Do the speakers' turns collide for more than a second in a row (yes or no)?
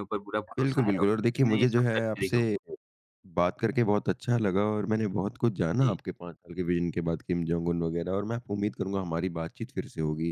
yes